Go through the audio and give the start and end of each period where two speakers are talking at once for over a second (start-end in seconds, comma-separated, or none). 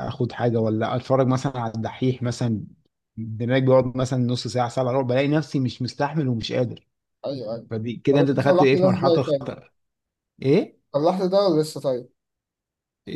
8.1-9.6